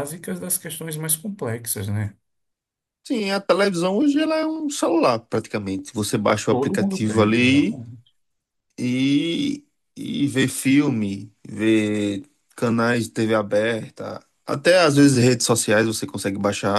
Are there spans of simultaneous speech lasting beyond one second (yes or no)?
yes